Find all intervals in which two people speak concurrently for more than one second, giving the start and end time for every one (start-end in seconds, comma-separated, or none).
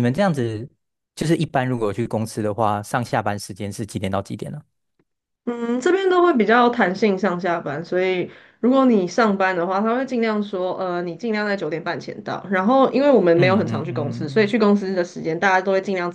13.3-14.6